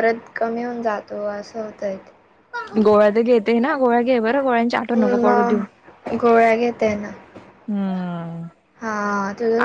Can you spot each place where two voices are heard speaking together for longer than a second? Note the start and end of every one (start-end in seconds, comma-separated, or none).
none